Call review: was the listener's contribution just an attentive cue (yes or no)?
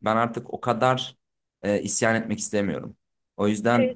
yes